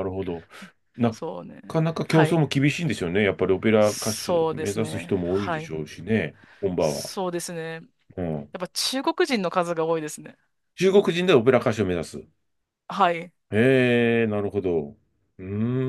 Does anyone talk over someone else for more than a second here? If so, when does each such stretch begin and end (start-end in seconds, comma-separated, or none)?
3.8-5.7